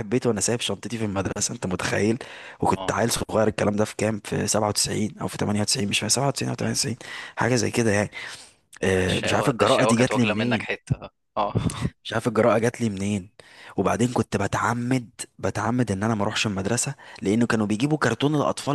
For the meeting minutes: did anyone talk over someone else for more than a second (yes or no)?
yes